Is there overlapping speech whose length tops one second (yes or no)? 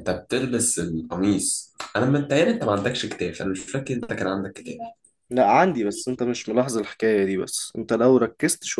no